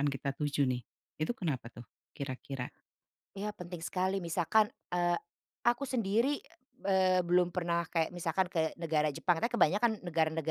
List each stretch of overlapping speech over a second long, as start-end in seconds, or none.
none